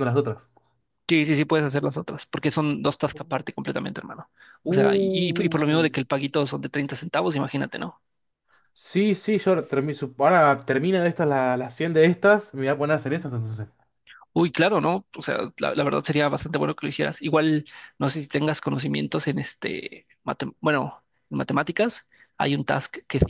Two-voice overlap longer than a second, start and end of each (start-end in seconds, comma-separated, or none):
4.7-5.9